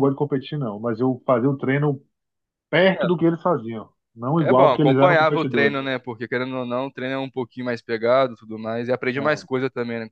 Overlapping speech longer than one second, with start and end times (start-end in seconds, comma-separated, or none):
4.3-5.8